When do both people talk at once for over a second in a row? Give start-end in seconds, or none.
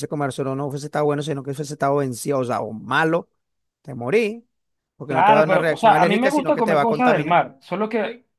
5.1-7.4